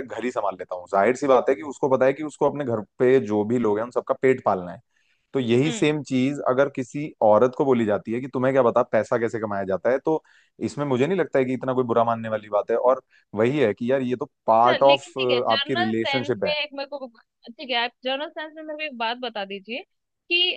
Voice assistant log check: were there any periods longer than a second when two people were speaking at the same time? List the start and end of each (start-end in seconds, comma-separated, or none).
14.6-16.5